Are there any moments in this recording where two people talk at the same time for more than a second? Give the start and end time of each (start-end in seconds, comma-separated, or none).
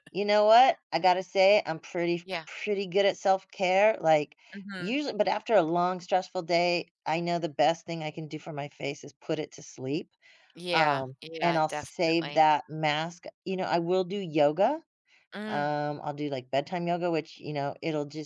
10.7-12.5